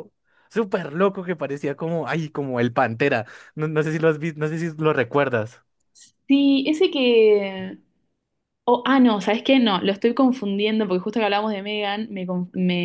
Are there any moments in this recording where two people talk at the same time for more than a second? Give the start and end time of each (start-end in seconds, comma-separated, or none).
none